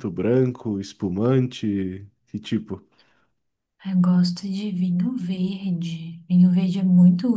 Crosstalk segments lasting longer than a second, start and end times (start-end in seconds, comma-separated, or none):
none